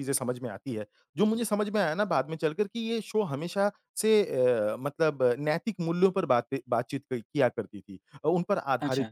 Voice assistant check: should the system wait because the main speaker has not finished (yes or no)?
yes